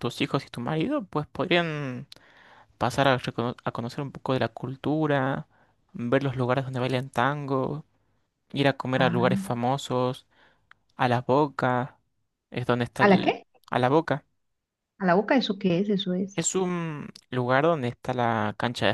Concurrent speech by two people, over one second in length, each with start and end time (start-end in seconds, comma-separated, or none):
none